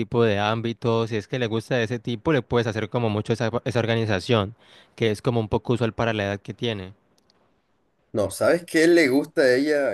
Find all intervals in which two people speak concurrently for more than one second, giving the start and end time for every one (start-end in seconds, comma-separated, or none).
none